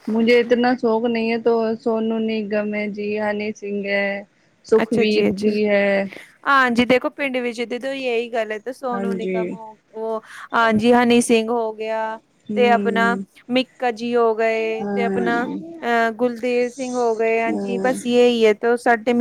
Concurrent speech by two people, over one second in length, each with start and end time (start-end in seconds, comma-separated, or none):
none